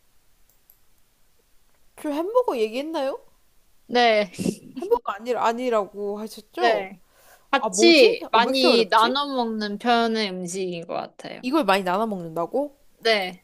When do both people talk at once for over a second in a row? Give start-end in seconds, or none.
7.5-9.2